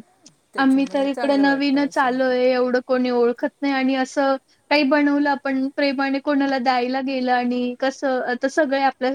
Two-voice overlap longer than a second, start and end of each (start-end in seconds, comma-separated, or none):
0.6-2.1